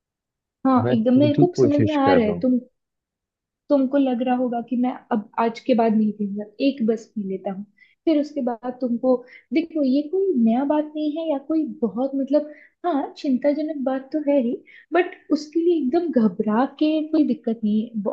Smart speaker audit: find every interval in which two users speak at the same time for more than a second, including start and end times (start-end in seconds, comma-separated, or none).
0.9-2.5